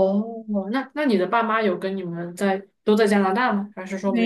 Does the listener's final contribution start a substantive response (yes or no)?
yes